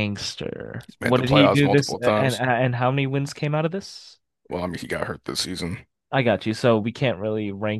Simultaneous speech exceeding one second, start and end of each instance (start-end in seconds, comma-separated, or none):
0.8-2.4